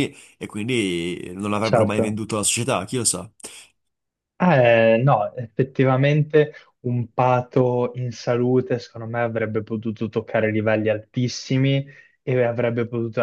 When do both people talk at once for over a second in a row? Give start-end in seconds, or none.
none